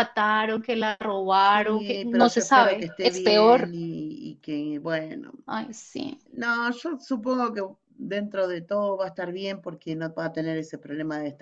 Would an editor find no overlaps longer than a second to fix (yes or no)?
no